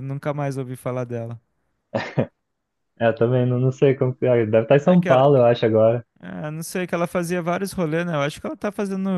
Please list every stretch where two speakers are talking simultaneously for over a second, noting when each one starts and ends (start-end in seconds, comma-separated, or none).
none